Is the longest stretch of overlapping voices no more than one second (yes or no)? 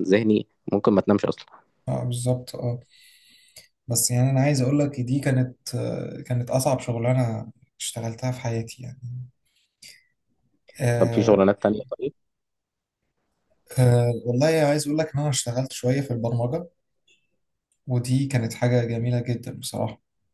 yes